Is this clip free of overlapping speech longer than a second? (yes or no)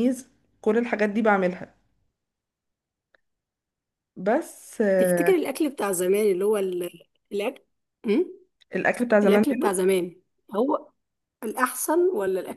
yes